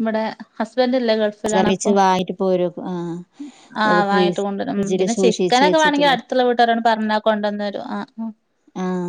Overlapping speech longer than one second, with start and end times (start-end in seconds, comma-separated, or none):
3.9-6.2